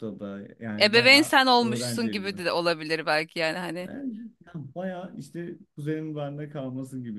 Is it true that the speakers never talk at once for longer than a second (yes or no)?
no